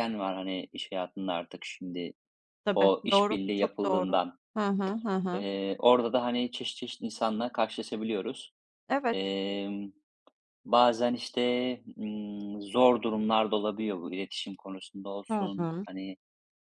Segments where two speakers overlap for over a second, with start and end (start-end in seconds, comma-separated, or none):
2.7-4.2